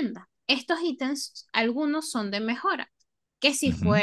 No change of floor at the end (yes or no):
yes